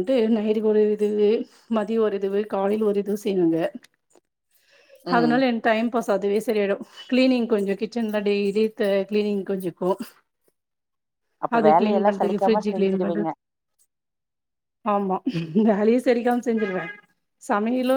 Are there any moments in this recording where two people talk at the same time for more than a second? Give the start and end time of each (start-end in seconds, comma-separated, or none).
11.6-13.3